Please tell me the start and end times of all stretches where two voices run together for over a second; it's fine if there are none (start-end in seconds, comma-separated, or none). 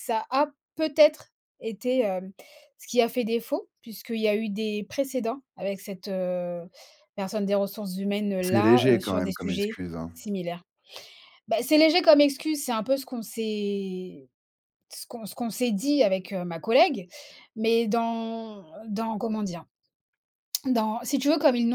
8.4-9.8